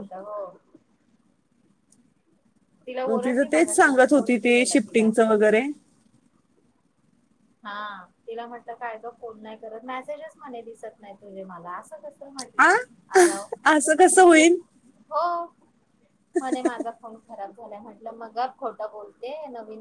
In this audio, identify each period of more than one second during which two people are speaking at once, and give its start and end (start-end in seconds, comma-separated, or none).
3.1-5.1